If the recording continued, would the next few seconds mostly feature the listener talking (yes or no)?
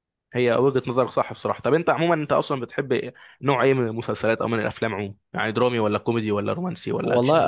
yes